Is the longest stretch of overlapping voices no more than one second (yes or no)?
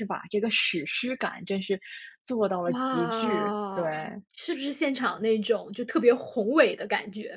no